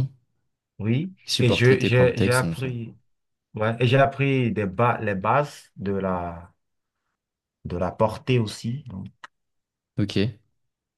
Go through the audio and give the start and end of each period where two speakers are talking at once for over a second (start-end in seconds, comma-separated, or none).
1.2-2.7